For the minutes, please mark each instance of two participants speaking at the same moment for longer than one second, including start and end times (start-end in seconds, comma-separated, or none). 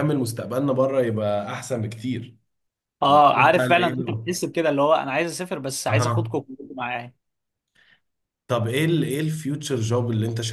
3.1-4.3